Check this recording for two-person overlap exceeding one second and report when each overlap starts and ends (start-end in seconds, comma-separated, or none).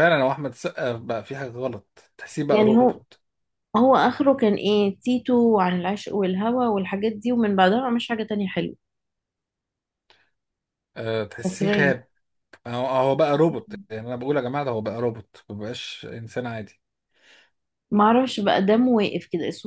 none